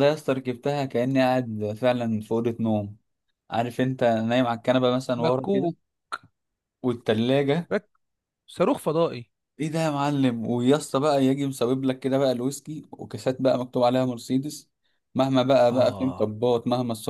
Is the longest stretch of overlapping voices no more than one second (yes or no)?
yes